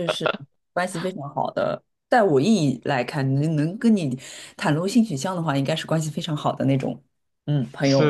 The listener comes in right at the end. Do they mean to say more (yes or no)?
yes